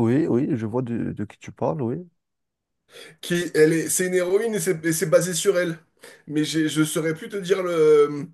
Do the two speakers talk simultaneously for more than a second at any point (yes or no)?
no